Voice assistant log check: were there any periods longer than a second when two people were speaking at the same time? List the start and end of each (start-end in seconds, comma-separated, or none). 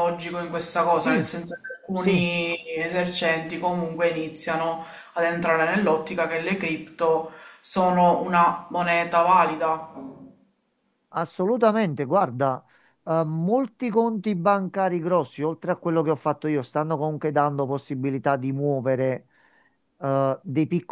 none